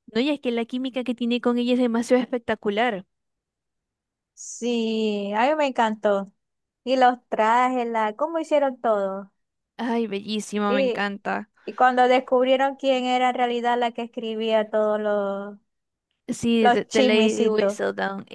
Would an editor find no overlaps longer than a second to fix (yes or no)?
no